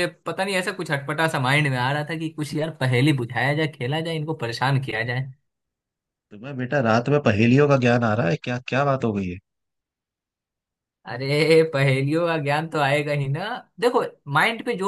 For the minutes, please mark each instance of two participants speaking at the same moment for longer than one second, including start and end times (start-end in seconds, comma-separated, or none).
none